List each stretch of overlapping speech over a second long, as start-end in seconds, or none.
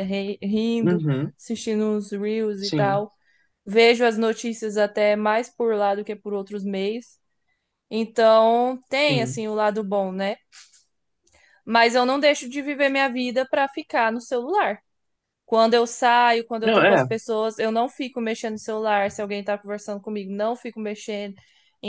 none